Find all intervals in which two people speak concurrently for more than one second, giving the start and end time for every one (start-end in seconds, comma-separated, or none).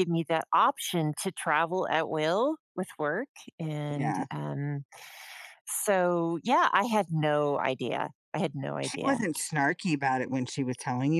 none